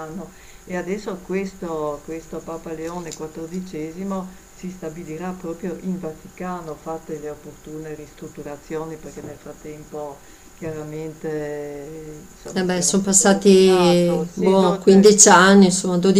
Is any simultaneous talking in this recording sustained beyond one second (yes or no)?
yes